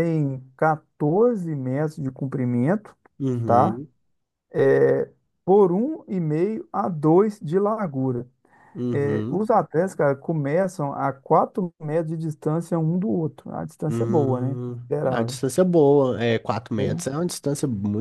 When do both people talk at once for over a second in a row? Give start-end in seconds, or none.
13.9-15.4